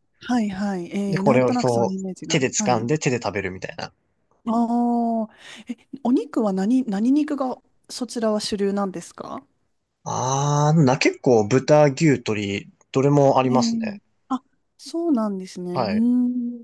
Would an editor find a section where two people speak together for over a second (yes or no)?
yes